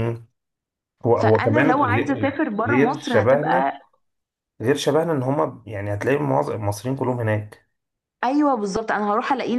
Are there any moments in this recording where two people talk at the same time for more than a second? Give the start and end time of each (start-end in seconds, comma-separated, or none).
1.1-3.8